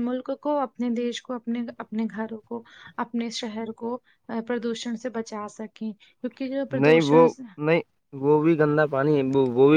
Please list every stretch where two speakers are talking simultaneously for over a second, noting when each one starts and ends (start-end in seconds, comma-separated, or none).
none